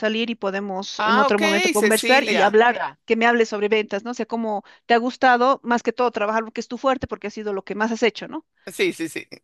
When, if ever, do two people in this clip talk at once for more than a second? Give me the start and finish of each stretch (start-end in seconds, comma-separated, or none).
1.0-2.6